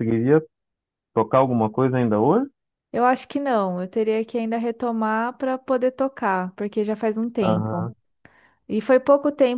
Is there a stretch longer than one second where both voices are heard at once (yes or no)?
no